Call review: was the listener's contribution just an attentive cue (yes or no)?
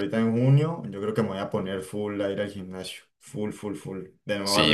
no